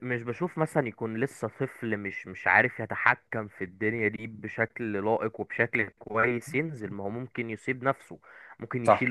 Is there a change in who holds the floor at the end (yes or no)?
no